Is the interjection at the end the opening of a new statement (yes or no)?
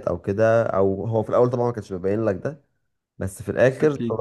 no